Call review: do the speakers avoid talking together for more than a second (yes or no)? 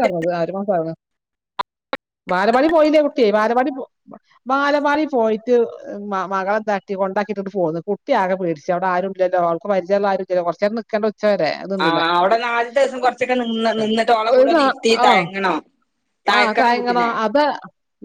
yes